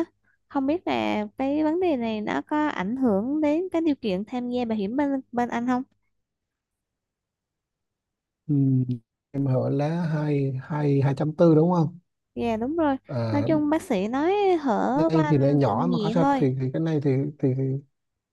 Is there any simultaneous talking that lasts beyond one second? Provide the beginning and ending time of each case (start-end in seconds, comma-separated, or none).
14.9-16.5